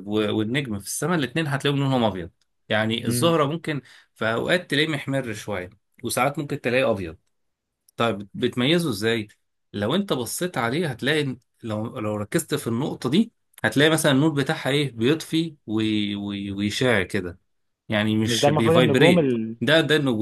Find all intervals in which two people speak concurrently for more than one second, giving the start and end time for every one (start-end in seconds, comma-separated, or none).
18.3-19.6